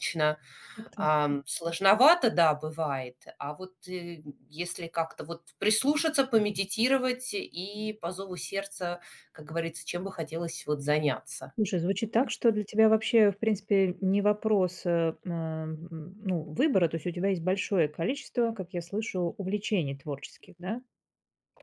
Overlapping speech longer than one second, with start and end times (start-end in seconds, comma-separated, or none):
none